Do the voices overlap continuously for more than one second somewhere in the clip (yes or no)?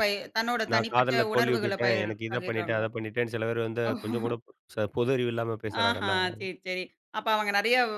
yes